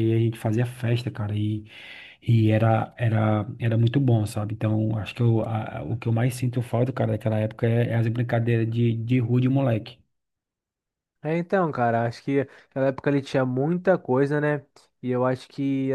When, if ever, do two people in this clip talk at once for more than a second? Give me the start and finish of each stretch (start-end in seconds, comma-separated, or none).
none